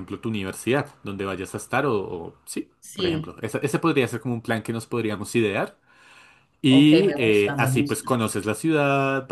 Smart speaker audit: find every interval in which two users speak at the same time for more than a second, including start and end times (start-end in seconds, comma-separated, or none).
6.7-8.1